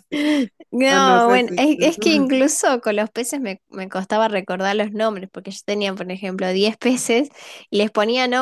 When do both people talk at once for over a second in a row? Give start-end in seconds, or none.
0.9-2.3